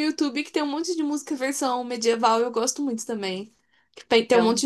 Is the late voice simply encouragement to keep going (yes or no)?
yes